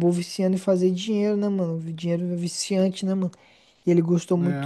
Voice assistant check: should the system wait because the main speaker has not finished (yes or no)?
yes